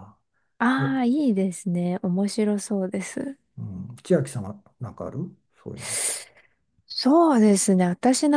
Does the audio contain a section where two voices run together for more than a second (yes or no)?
no